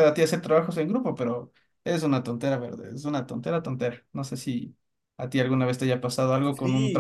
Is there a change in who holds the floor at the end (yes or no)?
yes